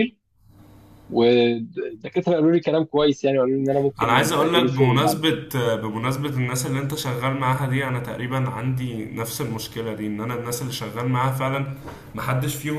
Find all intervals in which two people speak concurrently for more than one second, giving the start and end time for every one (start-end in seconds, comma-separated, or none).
4.0-5.4